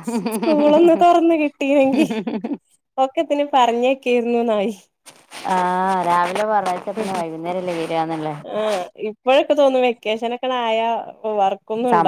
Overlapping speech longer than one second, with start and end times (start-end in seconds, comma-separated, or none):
none